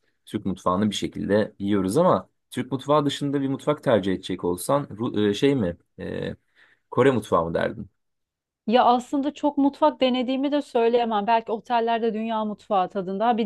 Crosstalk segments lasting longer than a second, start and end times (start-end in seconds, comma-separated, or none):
none